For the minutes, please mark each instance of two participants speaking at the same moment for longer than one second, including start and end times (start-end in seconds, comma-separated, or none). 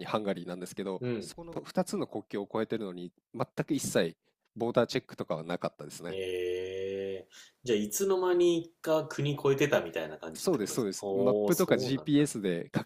10.3-12.3